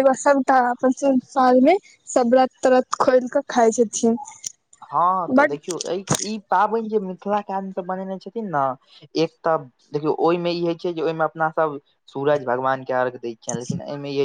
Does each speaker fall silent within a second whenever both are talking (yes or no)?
yes